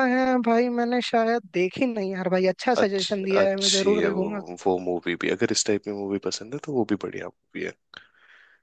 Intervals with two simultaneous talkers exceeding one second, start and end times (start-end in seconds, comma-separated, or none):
2.8-4.3